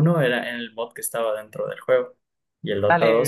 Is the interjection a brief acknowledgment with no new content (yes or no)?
no